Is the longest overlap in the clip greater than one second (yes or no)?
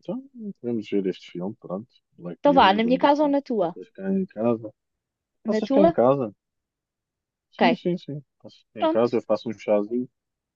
yes